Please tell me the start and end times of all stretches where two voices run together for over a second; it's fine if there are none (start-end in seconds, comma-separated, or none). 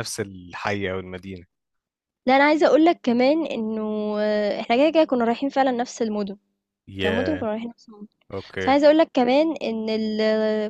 none